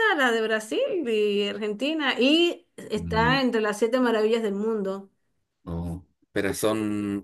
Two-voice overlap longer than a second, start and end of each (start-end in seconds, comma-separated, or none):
none